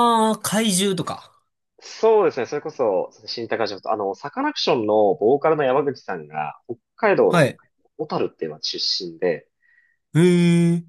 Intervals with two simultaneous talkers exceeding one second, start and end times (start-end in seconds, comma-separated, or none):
none